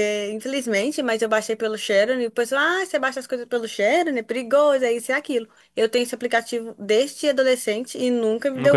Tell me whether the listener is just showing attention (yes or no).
no